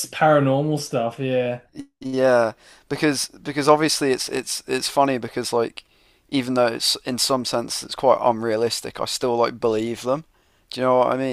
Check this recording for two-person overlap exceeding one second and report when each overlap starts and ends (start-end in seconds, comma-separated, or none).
none